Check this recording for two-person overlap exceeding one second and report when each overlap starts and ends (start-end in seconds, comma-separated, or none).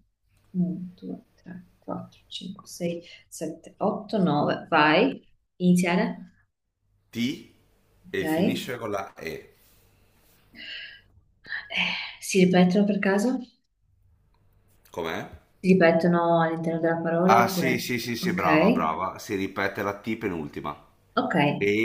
17.3-19.1